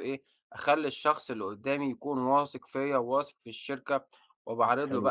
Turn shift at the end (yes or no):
no